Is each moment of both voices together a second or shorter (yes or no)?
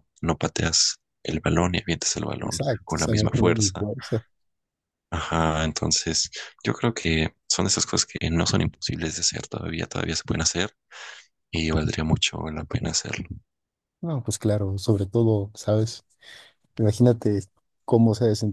no